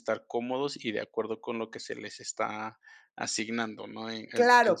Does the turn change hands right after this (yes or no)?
yes